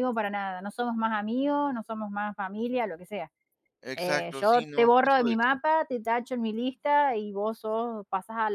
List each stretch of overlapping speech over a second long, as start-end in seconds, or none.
3.9-5.6